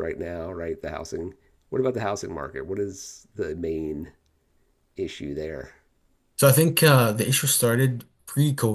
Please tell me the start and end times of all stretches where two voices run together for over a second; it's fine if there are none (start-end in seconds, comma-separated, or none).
none